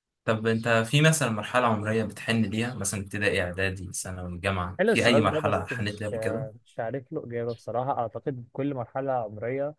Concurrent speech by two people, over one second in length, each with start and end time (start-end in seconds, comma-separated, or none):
4.8-6.1